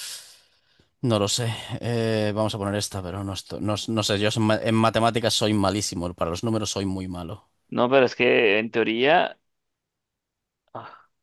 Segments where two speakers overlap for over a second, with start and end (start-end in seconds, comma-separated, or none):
none